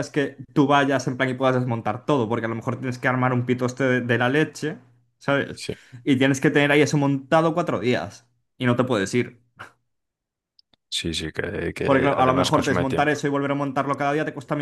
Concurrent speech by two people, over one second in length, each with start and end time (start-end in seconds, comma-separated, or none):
11.8-13.2